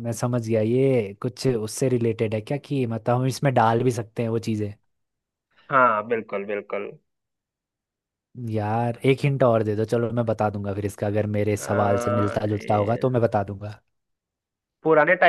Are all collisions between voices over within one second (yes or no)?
no